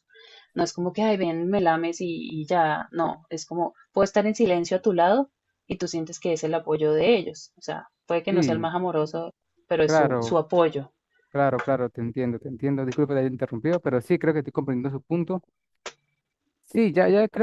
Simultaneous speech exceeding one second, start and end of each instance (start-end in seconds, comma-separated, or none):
none